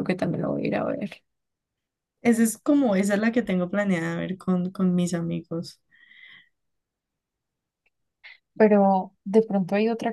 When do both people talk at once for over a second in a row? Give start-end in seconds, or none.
none